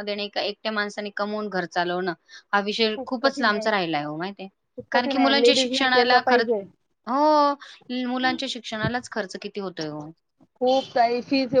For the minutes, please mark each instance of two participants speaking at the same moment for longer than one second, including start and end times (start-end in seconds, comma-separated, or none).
4.9-6.5